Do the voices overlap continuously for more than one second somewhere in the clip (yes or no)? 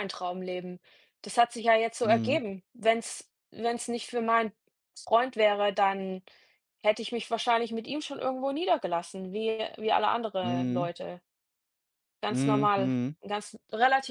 no